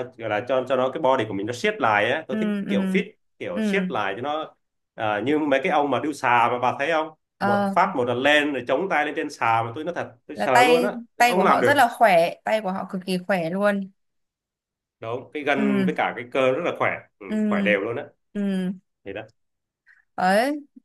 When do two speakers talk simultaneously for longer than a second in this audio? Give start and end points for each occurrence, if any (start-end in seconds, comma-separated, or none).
10.3-11.8